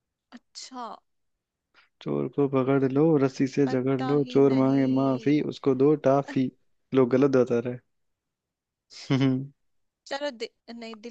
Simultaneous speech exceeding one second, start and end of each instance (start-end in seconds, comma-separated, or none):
3.7-5.4